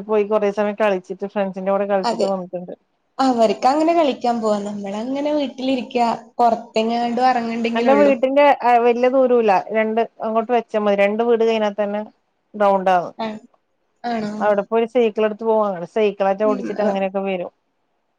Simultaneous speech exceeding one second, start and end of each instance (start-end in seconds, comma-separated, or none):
none